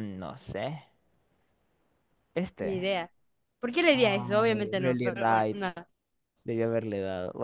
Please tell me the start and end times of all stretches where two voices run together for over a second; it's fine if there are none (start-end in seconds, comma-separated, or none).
3.9-5.6